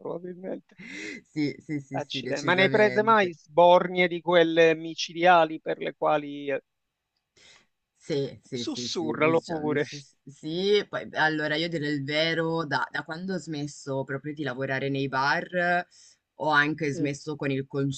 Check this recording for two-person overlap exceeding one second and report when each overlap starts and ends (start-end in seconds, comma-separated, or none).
2.0-3.3, 8.6-9.9